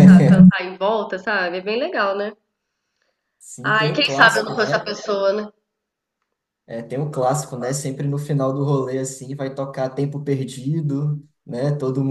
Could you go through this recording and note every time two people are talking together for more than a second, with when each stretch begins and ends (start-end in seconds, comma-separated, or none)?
3.6-5.0